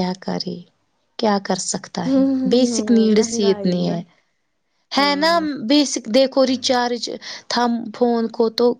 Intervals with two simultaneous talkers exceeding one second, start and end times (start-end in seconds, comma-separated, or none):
2.1-4.0